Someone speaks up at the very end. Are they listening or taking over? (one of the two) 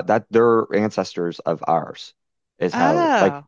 listening